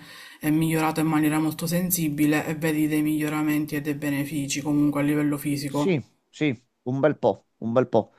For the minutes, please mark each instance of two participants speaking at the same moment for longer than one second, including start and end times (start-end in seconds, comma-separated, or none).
none